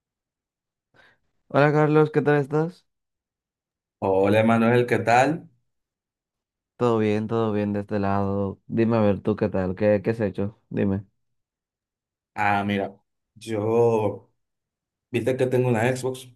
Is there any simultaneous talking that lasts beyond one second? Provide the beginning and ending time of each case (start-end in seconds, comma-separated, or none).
none